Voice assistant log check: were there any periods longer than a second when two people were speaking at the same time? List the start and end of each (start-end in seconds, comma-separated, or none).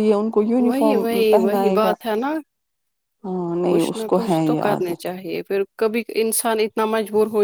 0.7-1.9